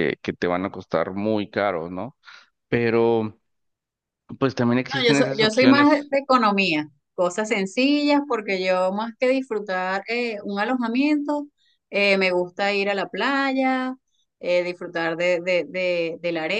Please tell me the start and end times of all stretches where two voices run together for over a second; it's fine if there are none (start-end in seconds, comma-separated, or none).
4.9-6.1